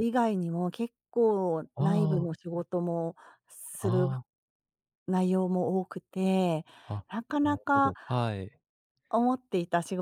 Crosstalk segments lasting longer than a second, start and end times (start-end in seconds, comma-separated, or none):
none